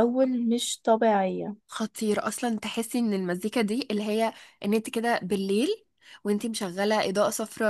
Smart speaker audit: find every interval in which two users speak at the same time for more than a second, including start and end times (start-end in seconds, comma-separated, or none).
none